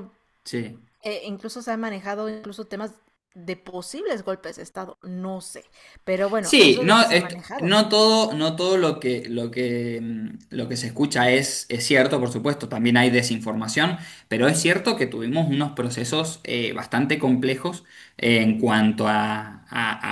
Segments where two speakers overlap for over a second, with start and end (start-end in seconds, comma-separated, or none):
6.4-7.8